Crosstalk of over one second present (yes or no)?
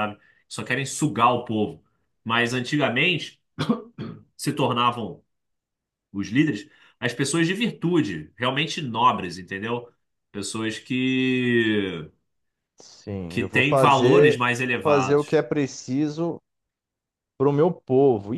yes